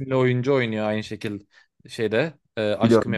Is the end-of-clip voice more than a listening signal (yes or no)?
no